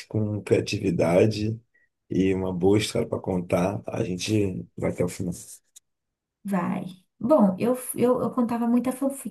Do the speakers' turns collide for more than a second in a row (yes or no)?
no